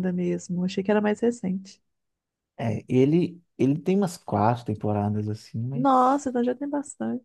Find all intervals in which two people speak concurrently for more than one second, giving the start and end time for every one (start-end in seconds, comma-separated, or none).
none